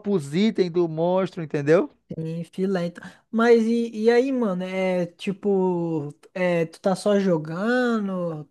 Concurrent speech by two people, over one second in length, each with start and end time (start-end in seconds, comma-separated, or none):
none